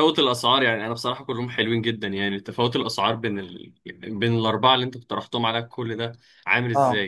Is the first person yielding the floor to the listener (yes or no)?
yes